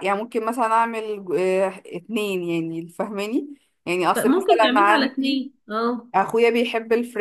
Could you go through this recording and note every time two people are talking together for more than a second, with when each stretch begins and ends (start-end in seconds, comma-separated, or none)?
4.2-5.4